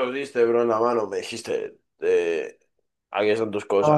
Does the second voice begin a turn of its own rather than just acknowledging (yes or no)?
no